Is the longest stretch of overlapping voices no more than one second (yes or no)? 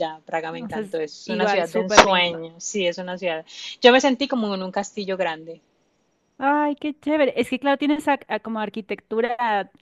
no